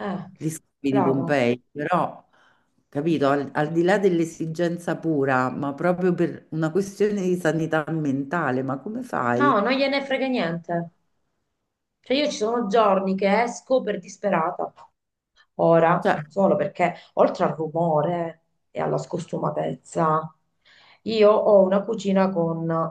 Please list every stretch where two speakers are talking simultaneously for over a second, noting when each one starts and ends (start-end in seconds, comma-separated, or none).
none